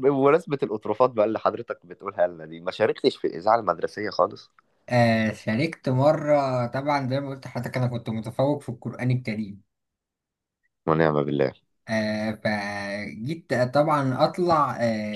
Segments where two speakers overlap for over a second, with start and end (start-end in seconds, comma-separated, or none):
none